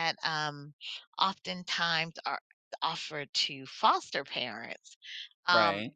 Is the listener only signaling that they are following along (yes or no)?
yes